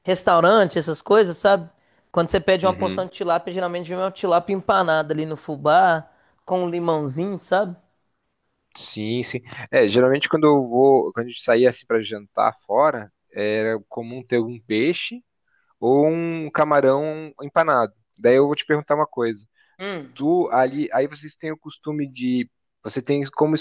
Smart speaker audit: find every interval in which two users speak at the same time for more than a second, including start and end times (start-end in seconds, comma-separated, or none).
none